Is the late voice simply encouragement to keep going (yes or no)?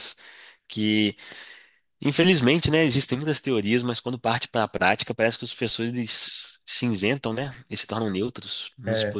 yes